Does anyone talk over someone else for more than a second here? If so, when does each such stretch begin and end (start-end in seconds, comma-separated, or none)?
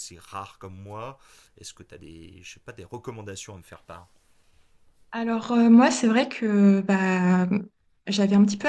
none